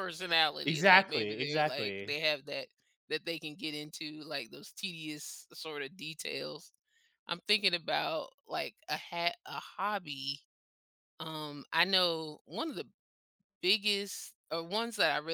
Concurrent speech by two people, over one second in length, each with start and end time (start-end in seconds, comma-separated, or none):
0.7-2.1